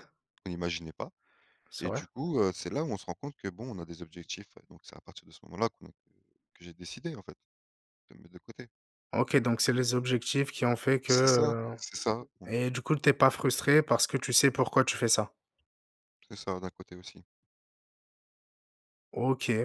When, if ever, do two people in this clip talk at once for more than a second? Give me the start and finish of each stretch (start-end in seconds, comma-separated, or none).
none